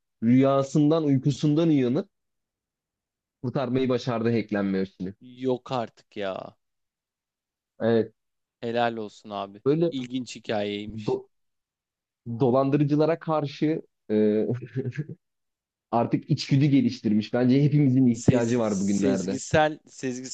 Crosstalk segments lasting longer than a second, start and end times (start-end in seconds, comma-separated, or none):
18.1-19.4